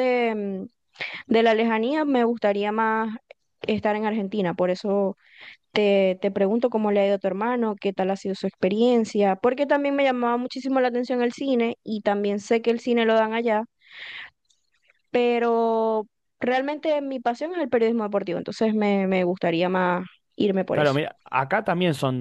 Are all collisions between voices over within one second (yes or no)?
yes